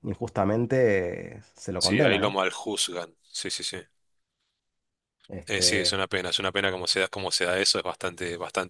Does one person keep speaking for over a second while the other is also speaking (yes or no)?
no